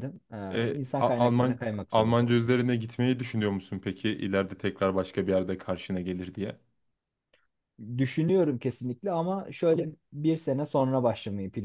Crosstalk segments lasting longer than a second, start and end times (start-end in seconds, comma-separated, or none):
0.5-2.5